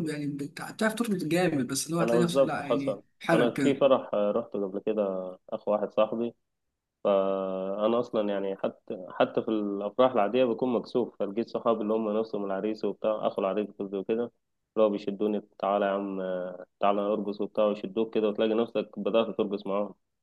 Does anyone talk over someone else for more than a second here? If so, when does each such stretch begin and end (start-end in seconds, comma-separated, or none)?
2.0-3.9